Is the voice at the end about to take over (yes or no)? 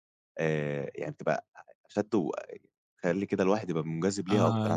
yes